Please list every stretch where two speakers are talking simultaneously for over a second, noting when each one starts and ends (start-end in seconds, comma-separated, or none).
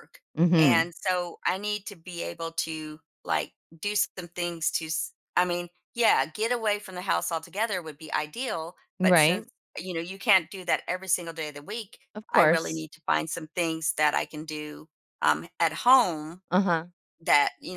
none